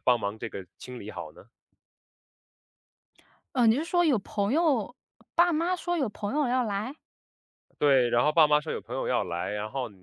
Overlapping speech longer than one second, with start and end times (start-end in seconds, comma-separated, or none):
none